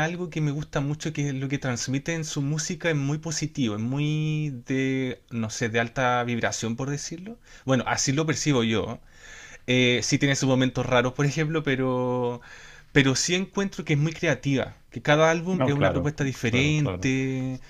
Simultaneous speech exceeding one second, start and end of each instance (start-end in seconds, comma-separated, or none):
15.5-17.1